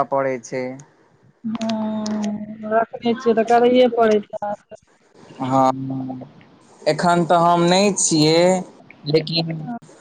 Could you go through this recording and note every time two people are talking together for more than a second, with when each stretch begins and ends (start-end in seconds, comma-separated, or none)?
none